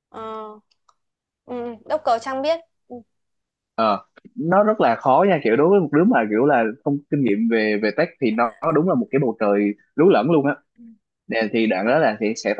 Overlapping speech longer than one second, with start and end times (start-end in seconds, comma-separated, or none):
none